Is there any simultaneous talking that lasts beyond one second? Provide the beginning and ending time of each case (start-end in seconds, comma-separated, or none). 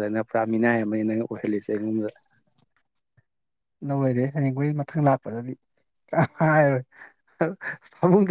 none